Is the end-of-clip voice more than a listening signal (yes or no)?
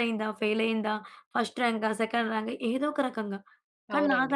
no